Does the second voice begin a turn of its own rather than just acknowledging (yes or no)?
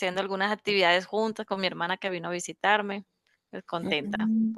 yes